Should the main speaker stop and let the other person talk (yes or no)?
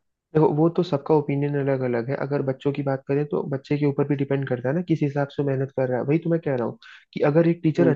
no